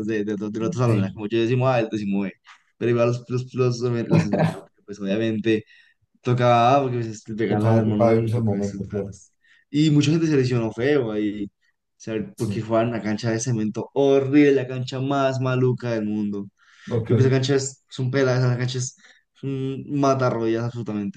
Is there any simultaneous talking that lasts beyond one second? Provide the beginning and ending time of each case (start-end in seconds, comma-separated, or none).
7.5-9.2